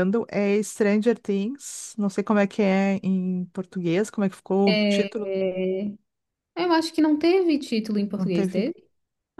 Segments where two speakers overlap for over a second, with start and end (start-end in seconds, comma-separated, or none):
none